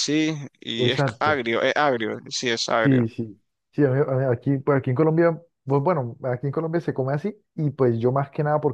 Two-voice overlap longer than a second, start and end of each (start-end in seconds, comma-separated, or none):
none